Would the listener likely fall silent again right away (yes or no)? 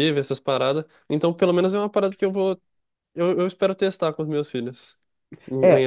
no